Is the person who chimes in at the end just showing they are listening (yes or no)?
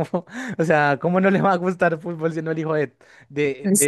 no